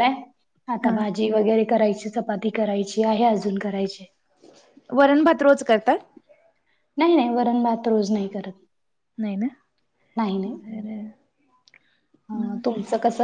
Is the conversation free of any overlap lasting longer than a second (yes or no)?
yes